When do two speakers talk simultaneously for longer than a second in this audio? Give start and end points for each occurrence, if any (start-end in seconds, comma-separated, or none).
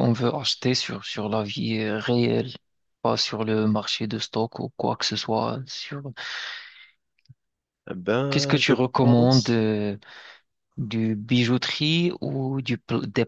8.3-9.7